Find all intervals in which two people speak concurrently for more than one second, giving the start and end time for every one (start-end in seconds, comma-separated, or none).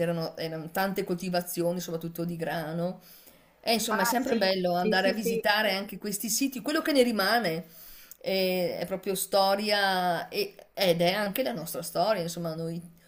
3.9-5.4